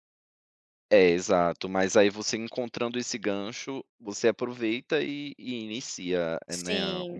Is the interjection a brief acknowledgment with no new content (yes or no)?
no